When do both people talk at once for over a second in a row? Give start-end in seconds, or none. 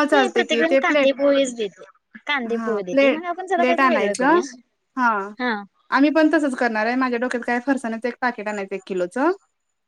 2.5-4.4